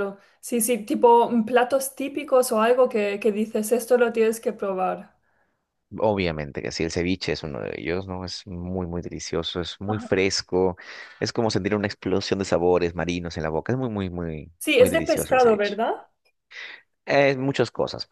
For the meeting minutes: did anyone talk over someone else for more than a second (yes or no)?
yes